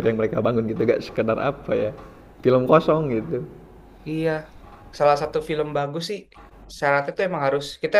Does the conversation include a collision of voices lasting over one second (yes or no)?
no